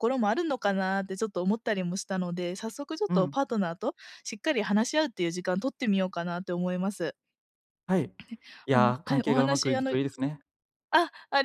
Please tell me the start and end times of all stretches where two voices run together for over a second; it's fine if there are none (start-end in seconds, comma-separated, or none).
8.7-9.9